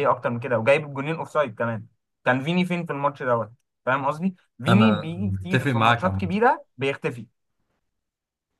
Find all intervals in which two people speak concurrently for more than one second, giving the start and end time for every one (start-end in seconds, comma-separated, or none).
4.7-6.4